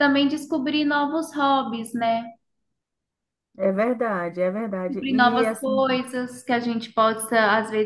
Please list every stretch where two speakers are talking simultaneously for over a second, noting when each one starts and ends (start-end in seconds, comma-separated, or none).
4.7-6.0